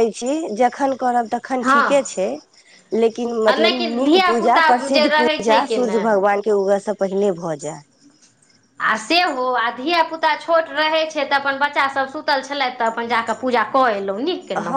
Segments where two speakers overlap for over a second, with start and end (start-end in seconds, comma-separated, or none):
3.5-6.0